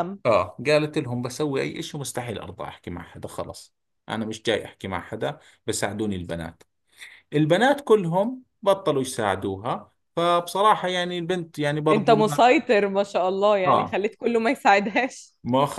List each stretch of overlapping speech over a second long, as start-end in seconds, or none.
none